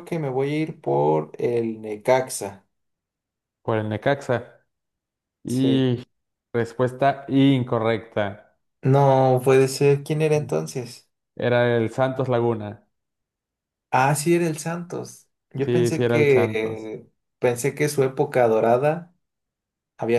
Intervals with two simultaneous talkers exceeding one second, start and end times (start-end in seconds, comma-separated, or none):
15.6-16.9